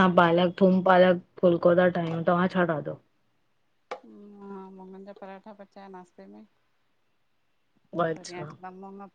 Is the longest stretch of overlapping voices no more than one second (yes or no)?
yes